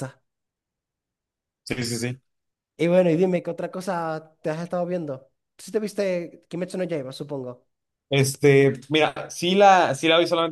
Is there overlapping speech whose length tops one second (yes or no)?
no